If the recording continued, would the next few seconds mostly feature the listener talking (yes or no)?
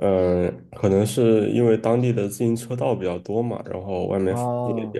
yes